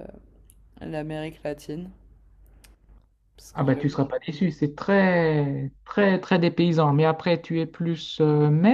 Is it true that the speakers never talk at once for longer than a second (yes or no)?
yes